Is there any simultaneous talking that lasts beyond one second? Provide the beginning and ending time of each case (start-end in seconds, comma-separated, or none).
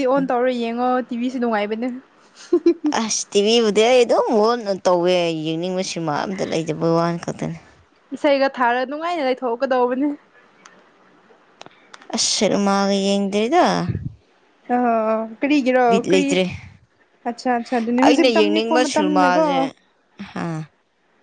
18.0-19.4